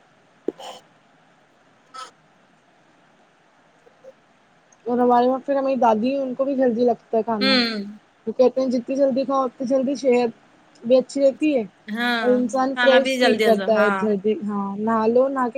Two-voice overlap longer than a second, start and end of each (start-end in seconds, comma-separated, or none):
12.2-13.9